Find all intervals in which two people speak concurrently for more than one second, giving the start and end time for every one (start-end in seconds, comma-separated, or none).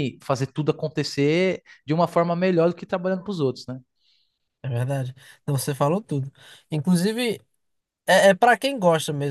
none